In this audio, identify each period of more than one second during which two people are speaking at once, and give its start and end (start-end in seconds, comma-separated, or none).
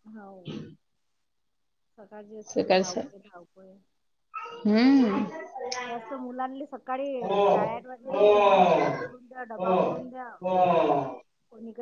none